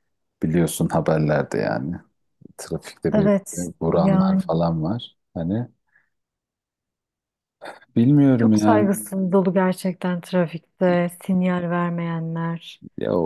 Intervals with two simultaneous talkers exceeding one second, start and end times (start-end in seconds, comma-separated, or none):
3.1-4.4